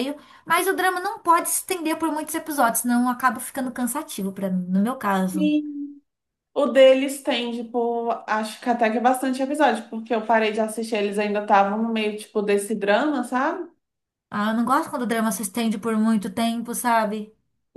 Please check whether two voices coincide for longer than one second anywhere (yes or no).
no